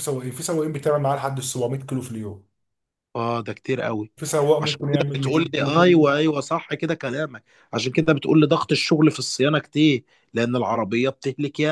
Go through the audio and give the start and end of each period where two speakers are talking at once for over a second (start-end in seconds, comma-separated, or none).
4.6-6.2